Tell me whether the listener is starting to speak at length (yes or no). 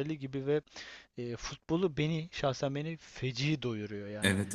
yes